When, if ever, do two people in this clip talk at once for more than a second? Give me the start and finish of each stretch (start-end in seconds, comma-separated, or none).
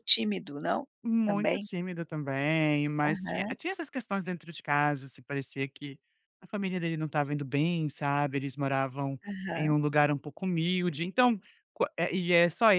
none